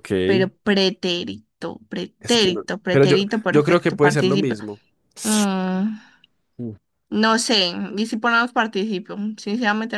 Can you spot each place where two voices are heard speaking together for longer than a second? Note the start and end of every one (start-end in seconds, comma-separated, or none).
2.2-4.6